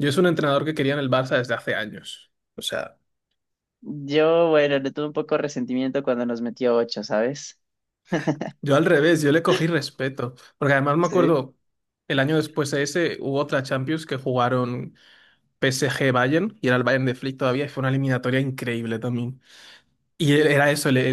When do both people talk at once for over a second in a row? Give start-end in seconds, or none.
none